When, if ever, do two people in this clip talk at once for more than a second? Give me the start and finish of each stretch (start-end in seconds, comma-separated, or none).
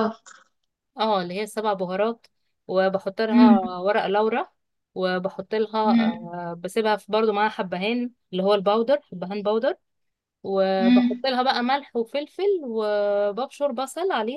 none